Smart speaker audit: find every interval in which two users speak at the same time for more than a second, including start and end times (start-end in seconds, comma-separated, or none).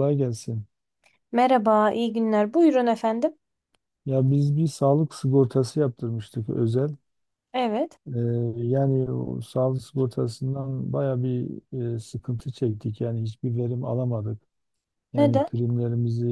none